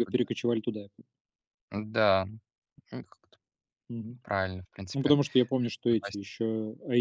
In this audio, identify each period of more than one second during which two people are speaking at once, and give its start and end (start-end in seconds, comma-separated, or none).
none